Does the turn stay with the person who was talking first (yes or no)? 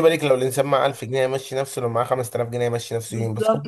no